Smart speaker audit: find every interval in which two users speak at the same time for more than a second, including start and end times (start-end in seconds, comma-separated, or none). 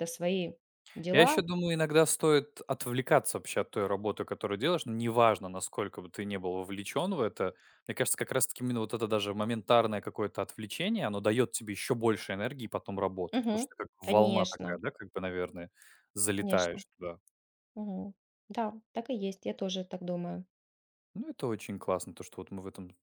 13.3-14.8